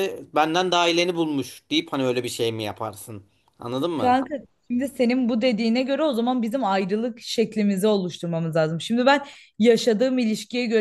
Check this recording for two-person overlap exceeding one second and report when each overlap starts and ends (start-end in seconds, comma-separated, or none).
none